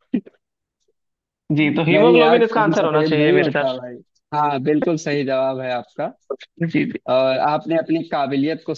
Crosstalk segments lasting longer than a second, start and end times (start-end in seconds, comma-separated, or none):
1.9-3.8